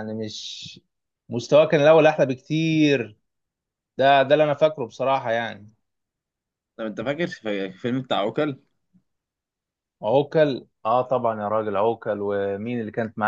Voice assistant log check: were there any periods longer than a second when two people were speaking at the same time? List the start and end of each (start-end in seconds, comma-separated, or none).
none